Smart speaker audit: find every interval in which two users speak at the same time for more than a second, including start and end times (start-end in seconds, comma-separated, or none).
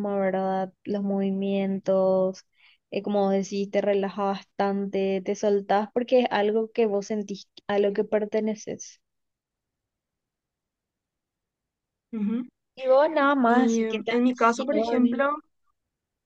13.4-15.2